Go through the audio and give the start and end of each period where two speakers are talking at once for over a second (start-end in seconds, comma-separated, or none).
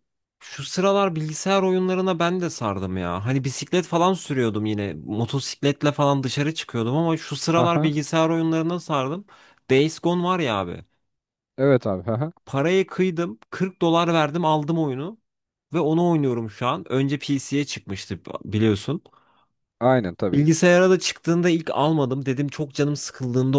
none